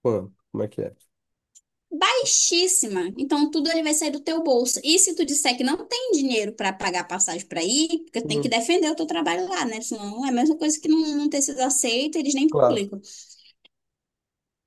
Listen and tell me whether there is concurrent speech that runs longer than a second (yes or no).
no